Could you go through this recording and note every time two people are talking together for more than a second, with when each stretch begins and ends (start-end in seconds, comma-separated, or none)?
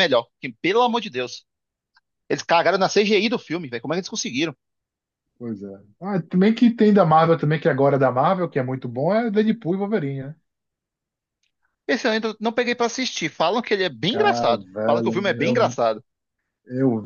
14.1-15.8